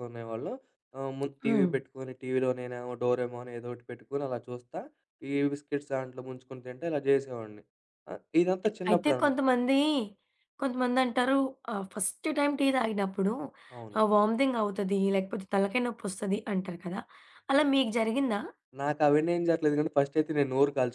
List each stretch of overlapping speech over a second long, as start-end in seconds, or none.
none